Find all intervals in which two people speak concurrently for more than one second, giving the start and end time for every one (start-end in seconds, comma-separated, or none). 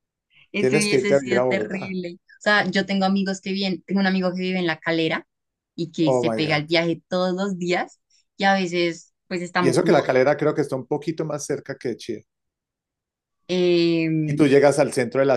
0.6-2.0